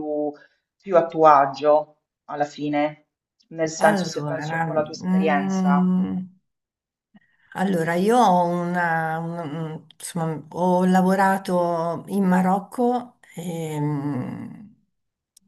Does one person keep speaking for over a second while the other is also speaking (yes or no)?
yes